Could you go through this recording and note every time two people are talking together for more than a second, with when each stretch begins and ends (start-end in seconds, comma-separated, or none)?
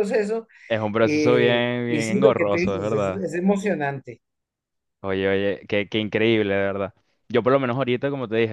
1.0-3.3